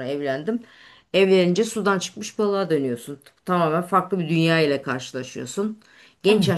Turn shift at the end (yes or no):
no